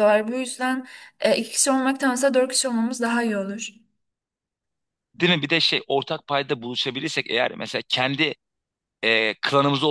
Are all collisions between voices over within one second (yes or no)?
yes